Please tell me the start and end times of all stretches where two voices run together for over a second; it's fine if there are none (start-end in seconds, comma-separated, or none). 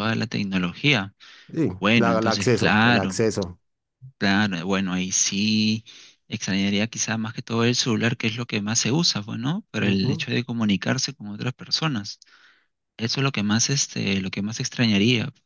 1.8-3.1